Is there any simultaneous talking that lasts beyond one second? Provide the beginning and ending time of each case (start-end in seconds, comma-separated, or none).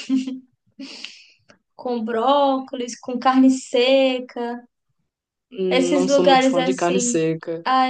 5.7-7.2